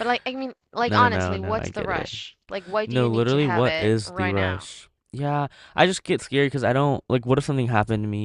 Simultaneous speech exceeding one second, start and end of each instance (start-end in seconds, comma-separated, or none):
0.8-2.1, 2.9-4.7